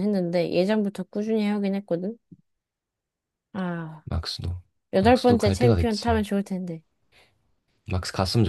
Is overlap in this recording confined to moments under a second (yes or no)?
no